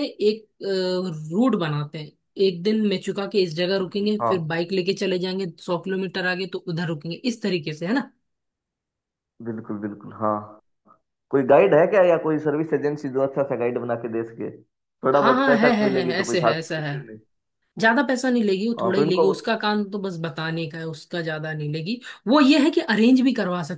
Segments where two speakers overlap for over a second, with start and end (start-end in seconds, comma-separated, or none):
15.1-16.9